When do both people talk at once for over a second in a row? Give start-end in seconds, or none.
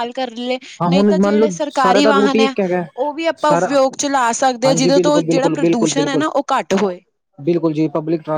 0.8-2.5, 4.7-6.2